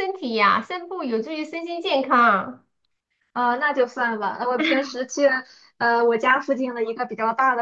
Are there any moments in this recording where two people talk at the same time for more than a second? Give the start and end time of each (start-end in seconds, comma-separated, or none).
none